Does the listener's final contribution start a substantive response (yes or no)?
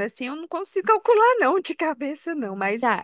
yes